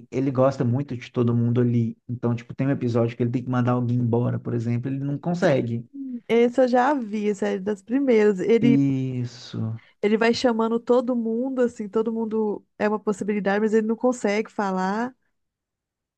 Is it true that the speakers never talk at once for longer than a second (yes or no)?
yes